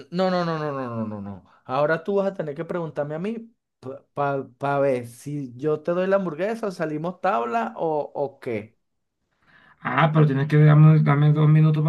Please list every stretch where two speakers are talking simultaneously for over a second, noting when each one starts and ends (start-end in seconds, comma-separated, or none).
none